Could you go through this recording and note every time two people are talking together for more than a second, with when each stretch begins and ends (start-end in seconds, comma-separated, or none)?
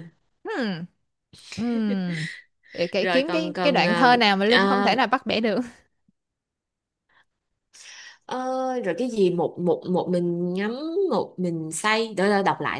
3.0-5.0